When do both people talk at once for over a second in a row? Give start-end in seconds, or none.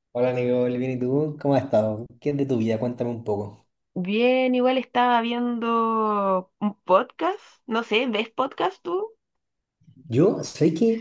none